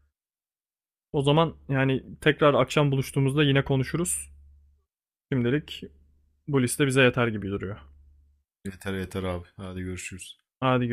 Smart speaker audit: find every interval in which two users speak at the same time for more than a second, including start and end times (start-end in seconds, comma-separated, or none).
none